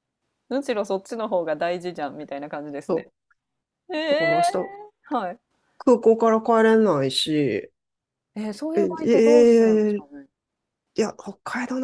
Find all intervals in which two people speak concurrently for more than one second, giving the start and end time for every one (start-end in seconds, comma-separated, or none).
8.8-10.1